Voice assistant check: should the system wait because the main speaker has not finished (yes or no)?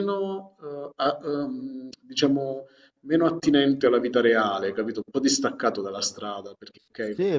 no